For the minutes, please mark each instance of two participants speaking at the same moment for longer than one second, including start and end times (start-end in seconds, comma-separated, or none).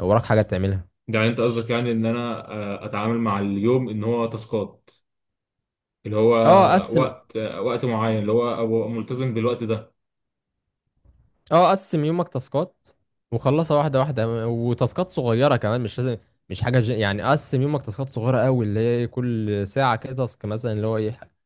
none